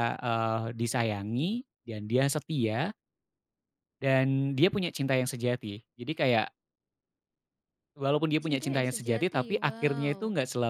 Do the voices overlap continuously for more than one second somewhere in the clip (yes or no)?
yes